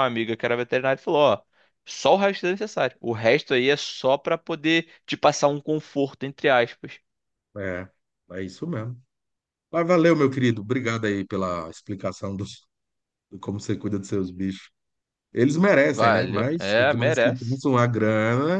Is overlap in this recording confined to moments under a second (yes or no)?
no